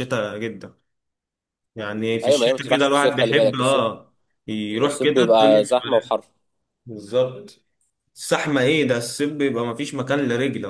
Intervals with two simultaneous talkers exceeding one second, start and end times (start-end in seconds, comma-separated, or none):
2.2-3.9, 4.8-6.1